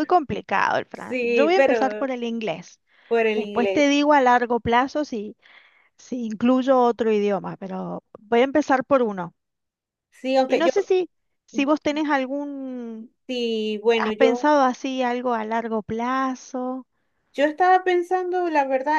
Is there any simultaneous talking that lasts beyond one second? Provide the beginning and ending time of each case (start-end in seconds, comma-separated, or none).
0.9-2.1